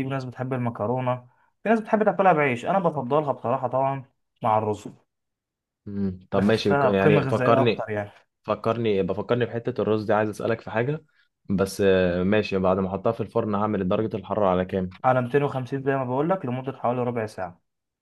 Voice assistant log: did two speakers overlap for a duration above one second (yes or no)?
yes